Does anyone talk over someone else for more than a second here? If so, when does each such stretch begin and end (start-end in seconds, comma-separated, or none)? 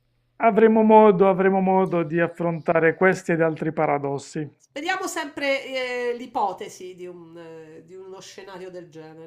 none